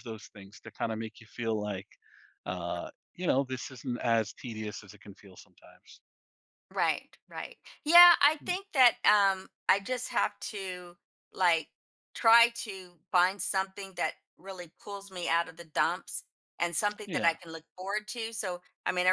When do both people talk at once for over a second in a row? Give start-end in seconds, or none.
none